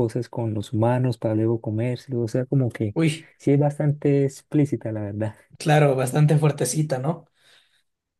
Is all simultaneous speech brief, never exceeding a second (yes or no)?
yes